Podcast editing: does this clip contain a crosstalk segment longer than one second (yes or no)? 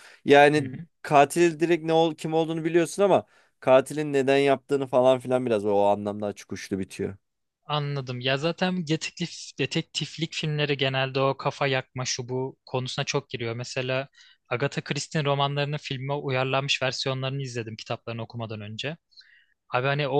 no